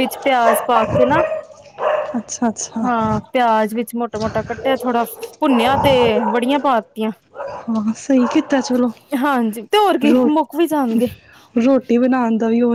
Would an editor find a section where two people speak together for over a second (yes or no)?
no